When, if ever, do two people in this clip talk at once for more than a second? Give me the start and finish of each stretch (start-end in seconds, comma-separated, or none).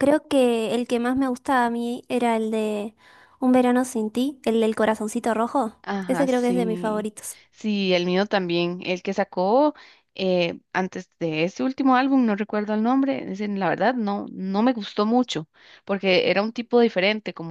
5.8-7.1